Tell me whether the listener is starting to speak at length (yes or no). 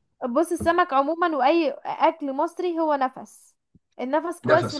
no